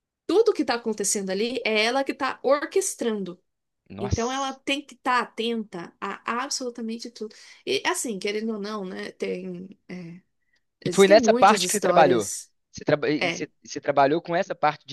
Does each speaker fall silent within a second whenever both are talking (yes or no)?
no